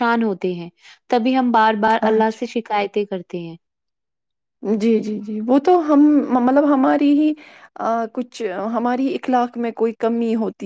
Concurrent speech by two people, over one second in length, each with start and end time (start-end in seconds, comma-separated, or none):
none